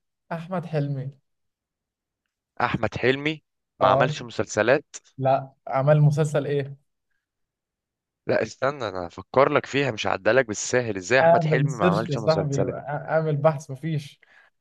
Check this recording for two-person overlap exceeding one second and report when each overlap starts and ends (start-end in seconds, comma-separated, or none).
11.2-12.8